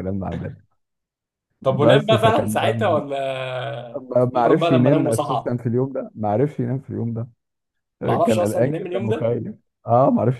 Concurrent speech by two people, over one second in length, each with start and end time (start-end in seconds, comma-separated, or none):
1.7-3.0, 4.0-5.5, 8.0-9.3